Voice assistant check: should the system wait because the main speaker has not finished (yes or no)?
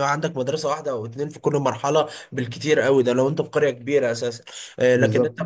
yes